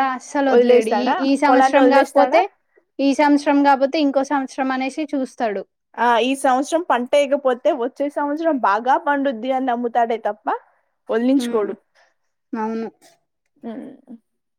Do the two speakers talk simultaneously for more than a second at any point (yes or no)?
yes